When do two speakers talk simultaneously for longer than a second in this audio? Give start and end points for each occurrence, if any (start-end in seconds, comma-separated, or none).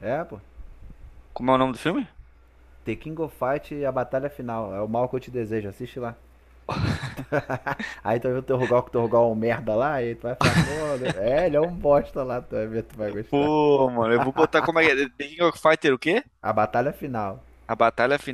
none